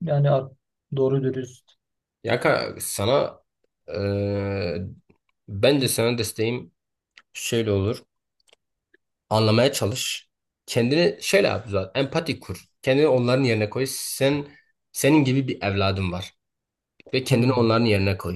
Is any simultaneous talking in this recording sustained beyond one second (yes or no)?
no